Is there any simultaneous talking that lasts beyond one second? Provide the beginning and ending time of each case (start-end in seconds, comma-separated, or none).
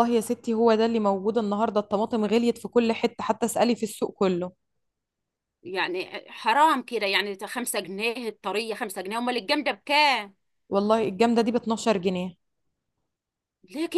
none